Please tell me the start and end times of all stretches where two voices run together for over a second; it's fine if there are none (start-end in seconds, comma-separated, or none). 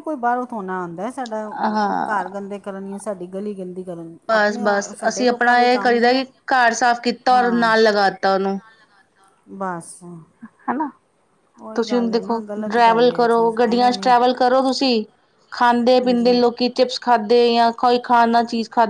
4.3-6.2, 11.7-14.1